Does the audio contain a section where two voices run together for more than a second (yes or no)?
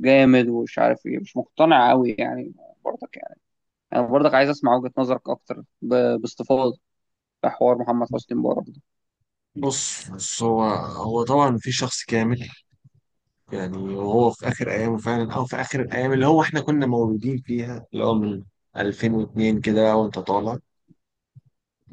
no